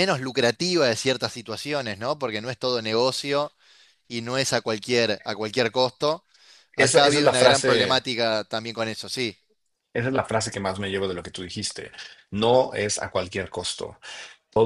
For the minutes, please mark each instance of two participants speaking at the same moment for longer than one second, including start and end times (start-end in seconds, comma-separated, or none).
6.8-8.0